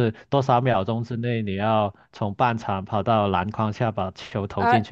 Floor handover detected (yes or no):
yes